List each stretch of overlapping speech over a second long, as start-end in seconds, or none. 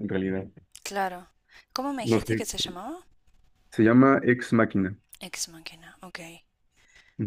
none